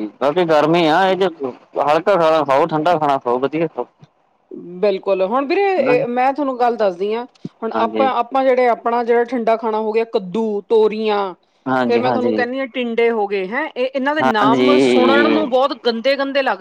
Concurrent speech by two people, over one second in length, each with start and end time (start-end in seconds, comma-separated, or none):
14.2-15.4